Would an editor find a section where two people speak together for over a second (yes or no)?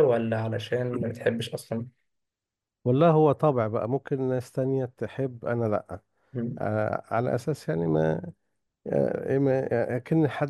no